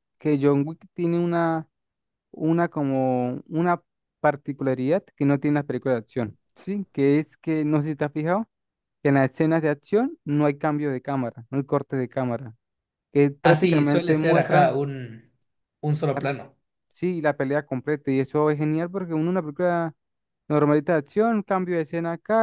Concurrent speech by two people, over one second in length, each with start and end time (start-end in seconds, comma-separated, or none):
13.4-14.8